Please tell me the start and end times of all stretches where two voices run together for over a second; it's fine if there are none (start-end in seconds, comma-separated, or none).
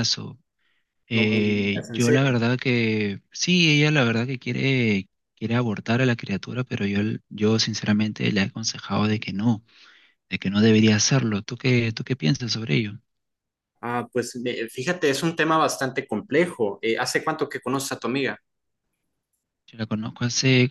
1.1-2.4